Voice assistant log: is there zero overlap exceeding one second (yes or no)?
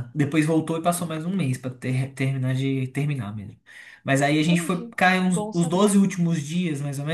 no